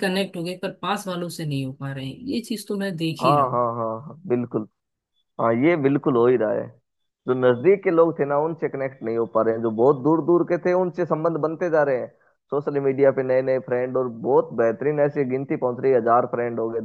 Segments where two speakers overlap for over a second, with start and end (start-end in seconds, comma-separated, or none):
none